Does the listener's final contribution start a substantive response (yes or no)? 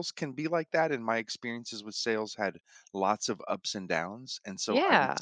no